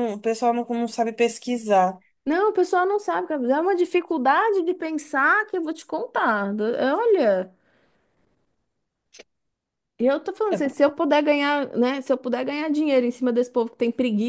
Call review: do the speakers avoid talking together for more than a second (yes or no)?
yes